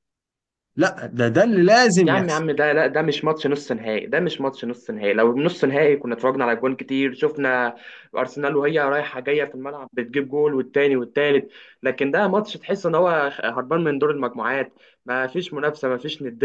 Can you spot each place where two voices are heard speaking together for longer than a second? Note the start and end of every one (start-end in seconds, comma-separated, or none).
none